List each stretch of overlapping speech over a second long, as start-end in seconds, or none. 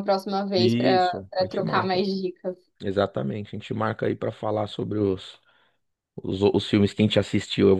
0.6-2.0